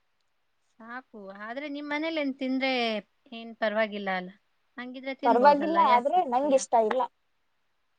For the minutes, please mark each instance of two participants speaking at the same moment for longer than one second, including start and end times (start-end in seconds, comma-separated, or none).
5.3-6.6